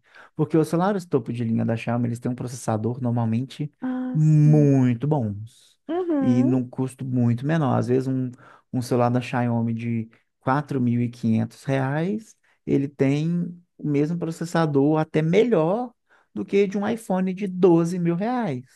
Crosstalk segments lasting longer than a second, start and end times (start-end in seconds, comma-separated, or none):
none